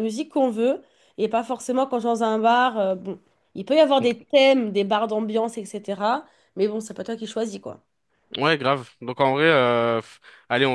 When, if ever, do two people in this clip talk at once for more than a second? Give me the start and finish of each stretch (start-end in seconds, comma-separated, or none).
none